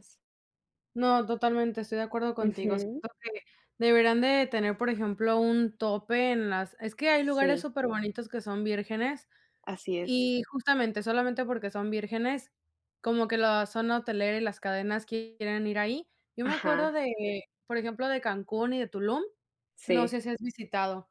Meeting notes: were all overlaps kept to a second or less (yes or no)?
yes